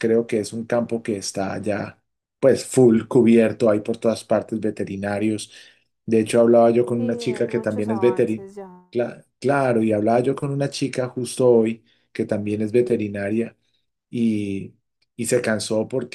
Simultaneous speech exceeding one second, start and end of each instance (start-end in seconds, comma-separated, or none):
7.0-8.5